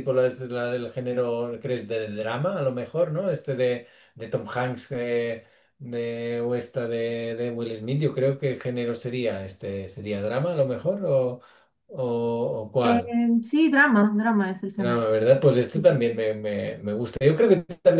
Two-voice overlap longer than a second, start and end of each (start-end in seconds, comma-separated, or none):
none